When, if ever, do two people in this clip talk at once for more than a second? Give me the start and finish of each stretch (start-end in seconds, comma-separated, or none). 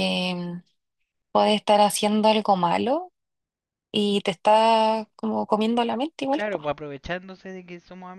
none